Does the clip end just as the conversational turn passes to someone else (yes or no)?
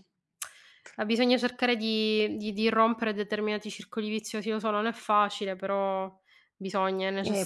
yes